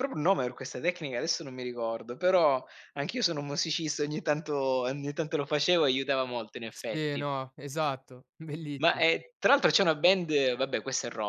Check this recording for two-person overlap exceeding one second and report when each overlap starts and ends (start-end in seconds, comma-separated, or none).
none